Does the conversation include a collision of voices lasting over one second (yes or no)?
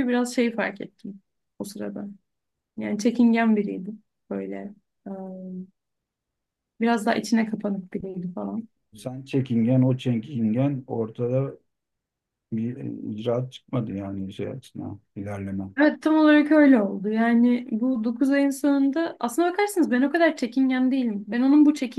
no